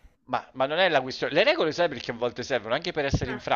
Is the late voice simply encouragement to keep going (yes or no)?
yes